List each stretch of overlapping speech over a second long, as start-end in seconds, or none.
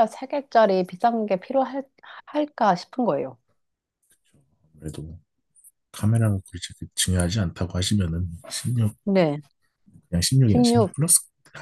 none